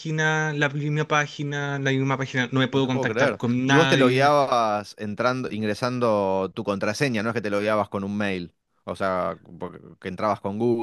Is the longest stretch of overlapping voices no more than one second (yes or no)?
no